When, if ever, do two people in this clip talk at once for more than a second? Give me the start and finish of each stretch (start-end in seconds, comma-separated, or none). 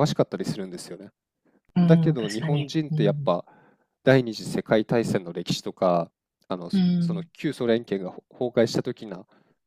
1.8-3.3